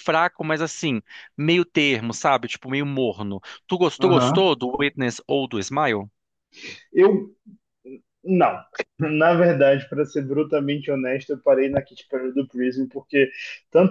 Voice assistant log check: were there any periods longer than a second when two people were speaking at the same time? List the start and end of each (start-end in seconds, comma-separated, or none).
none